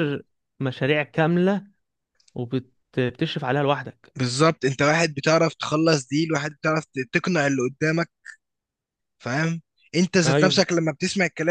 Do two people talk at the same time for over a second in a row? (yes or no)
no